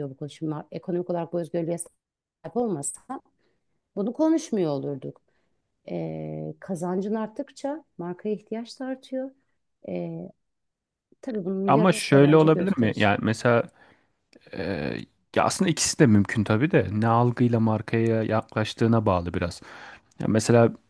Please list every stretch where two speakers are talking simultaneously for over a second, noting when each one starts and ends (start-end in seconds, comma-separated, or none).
11.7-13.1